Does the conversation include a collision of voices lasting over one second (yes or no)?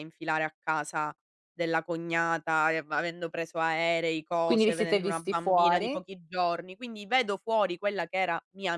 yes